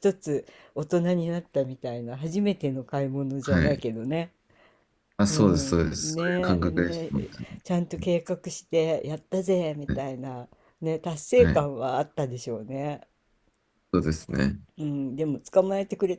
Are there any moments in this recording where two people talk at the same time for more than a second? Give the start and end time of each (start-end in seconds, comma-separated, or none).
5.3-7.3